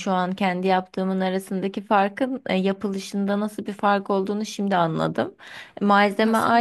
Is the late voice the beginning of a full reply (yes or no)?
no